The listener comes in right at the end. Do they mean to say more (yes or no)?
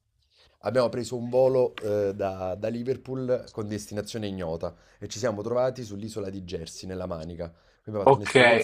yes